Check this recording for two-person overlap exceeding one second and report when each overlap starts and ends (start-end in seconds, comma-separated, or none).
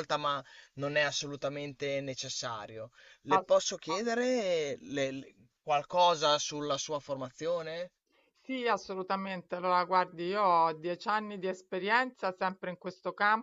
none